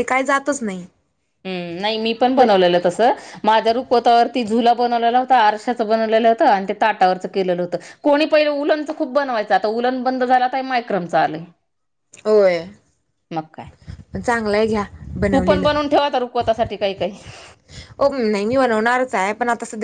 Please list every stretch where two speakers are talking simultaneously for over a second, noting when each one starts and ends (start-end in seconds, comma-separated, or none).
none